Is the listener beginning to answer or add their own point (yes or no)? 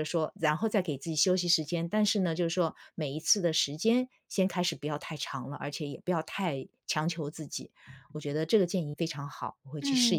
yes